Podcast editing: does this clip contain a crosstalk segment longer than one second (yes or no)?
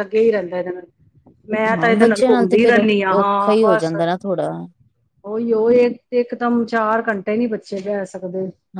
yes